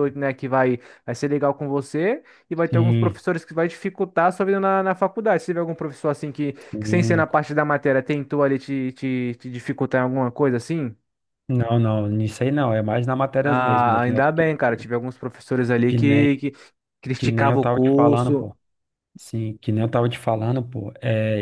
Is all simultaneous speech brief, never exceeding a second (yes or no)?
no